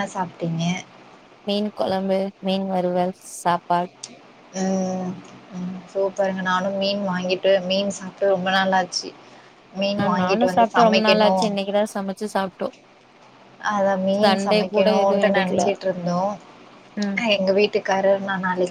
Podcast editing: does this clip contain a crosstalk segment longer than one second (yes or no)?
no